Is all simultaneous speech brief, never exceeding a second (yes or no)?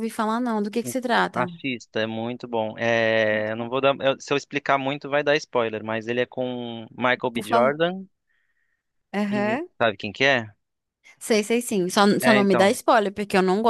yes